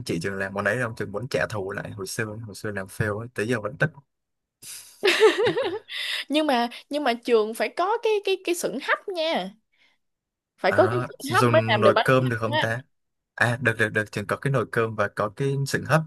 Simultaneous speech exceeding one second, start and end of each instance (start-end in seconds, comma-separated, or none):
10.7-12.7